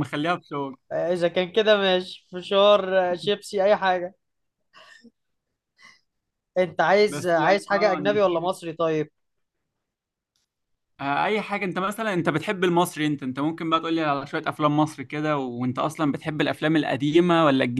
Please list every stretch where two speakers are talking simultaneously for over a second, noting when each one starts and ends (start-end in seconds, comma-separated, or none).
7.1-8.4